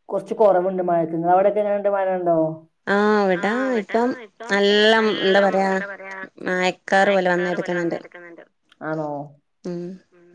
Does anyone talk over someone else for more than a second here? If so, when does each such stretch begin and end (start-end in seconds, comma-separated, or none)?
none